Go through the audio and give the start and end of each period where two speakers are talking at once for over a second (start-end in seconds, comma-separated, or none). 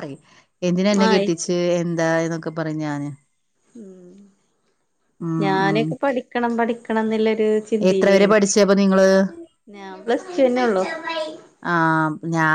none